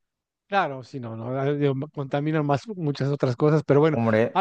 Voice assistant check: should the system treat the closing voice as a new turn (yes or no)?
no